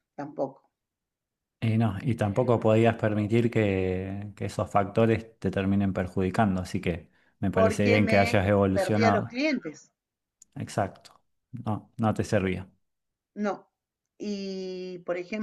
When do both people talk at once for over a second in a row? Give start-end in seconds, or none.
7.5-9.4